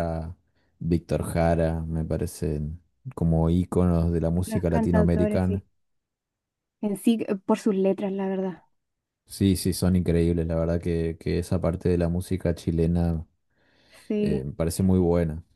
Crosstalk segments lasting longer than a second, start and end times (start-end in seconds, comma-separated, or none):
4.4-5.6